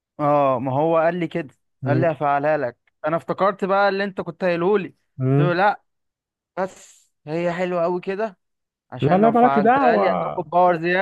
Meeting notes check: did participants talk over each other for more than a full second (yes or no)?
yes